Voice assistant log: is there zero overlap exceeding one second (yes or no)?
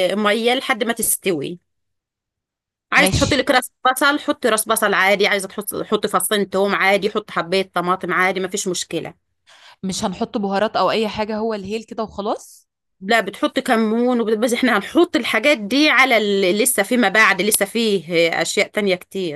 yes